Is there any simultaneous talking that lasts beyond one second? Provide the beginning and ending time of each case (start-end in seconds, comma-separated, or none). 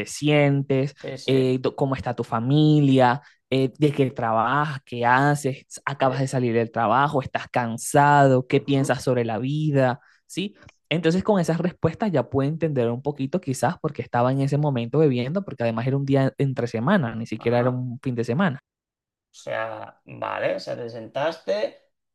none